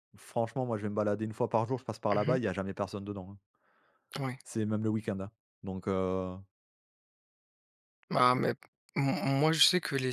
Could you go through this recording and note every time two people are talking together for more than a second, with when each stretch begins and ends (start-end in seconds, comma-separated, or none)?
none